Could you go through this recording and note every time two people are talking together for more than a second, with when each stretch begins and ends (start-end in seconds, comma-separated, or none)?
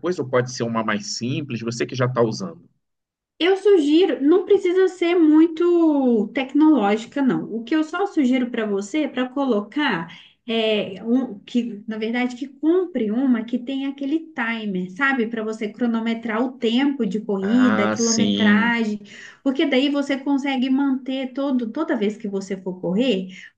17.4-18.8